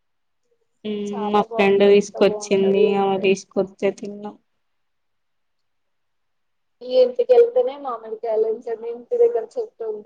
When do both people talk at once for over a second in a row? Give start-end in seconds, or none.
1.3-3.2